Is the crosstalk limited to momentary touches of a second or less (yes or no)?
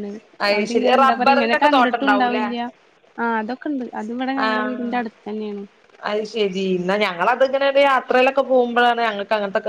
no